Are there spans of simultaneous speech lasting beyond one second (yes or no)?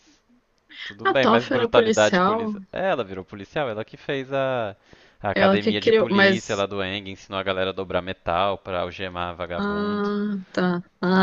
yes